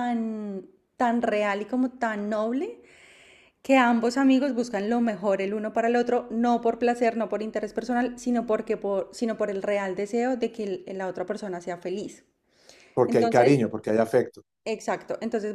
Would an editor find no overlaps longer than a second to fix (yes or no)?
yes